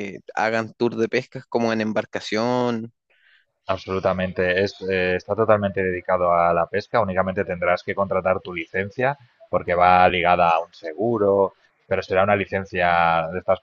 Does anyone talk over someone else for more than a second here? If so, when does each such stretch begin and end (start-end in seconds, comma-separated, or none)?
none